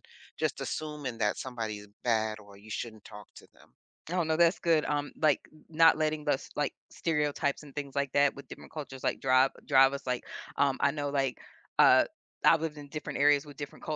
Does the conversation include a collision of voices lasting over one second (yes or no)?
no